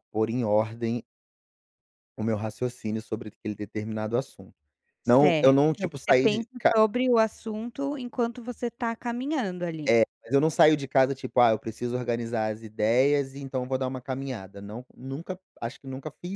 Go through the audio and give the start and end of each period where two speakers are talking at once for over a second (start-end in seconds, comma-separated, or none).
5.0-6.7